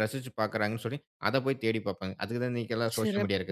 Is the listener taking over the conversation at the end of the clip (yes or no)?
yes